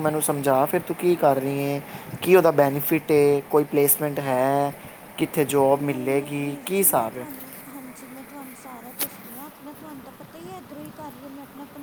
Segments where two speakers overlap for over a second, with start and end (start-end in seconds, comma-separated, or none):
5.8-7.3